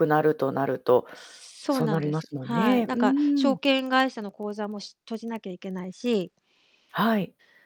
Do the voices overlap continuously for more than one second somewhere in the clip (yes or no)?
yes